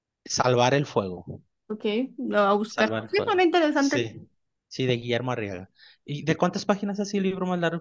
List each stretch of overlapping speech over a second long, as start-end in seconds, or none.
2.6-4.1